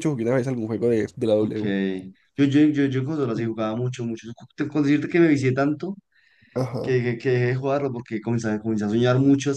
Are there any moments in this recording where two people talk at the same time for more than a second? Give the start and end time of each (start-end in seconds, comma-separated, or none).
none